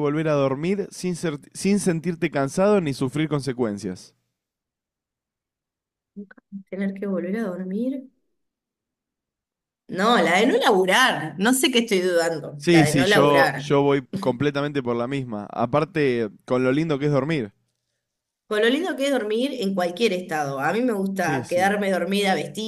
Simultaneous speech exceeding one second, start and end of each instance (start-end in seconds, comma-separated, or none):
12.6-13.8